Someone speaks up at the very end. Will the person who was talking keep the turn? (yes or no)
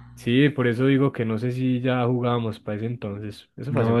no